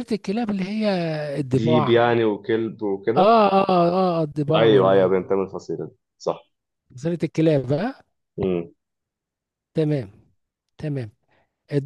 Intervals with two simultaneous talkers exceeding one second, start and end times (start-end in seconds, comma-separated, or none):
none